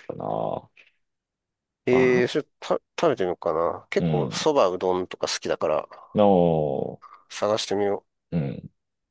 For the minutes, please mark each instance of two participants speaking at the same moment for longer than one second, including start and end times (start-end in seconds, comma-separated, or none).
none